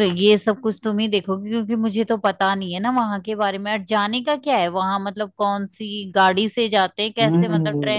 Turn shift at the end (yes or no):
yes